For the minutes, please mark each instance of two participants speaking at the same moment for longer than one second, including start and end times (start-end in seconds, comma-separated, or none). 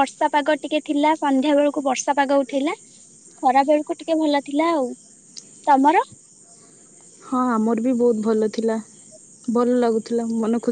none